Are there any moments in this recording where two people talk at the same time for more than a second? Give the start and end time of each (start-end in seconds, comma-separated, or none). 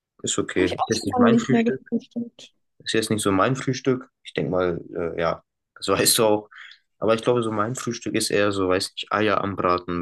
0.5-1.8